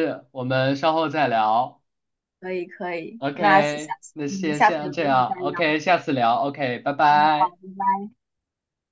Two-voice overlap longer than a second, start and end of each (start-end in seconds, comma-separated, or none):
3.2-5.6